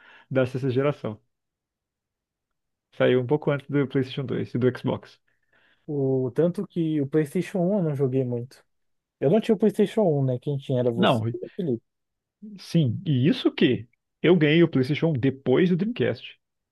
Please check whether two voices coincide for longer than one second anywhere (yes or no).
no